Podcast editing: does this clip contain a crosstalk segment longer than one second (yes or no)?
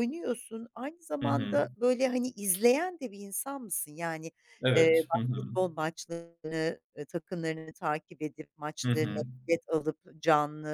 no